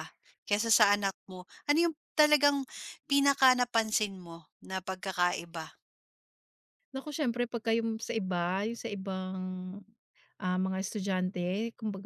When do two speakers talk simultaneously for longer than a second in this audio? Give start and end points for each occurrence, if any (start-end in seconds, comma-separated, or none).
none